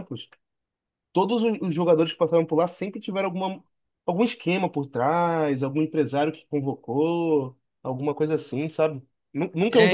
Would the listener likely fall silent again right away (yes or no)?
yes